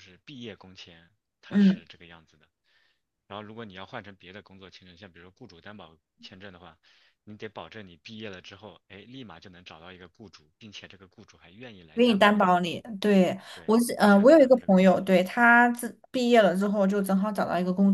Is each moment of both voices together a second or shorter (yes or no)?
no